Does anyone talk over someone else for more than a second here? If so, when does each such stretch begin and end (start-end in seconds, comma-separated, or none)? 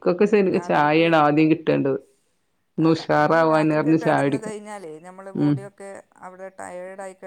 2.9-4.6